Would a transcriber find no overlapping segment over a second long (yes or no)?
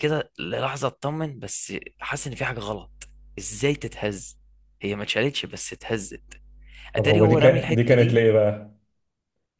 no